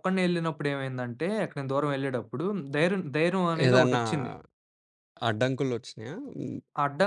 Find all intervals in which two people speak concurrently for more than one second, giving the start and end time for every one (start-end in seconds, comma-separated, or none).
none